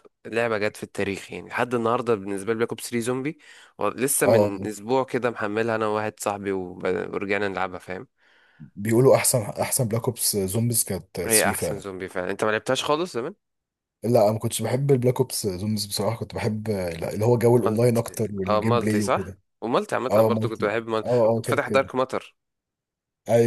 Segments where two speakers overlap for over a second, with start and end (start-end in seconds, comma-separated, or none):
17.7-19.4, 20.1-21.9